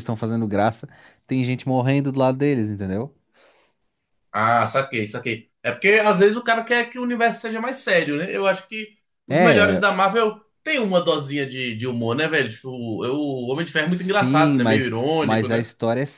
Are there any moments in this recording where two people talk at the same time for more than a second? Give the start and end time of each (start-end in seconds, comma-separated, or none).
13.8-15.7